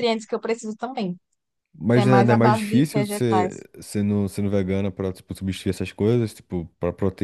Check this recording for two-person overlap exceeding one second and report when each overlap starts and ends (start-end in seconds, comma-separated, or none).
1.9-3.7